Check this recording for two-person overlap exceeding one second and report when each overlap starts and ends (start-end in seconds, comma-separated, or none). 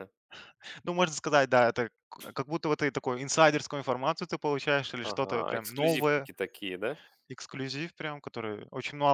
5.0-6.3